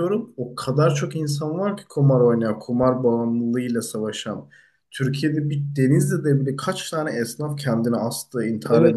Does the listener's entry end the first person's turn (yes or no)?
no